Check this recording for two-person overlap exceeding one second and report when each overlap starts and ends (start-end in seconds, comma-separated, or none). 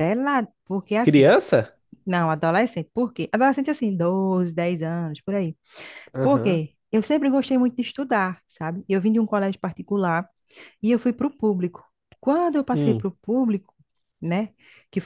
none